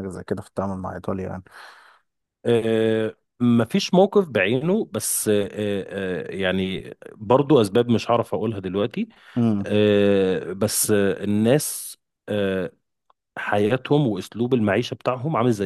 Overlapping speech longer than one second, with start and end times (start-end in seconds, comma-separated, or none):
none